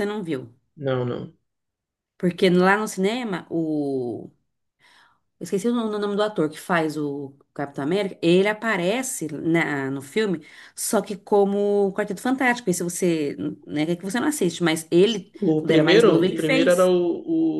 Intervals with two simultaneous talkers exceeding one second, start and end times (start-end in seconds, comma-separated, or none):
15.5-16.9